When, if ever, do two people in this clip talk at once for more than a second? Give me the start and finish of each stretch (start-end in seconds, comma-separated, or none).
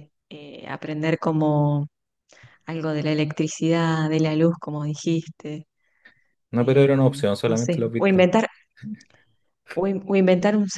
6.6-8.3